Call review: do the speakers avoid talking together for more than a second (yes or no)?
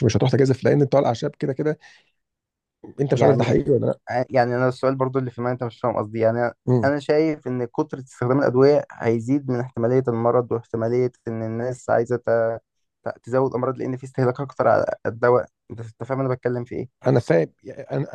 yes